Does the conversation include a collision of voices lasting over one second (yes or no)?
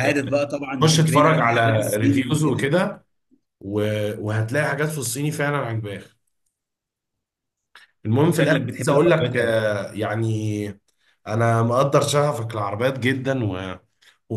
yes